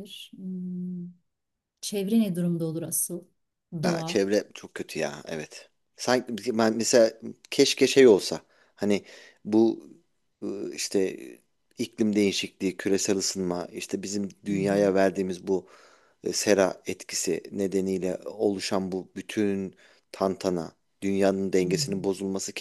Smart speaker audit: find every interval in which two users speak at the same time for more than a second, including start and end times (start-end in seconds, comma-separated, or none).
none